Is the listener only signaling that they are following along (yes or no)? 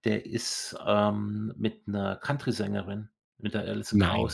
yes